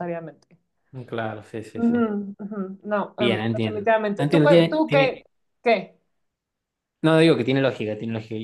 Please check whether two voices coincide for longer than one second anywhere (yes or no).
yes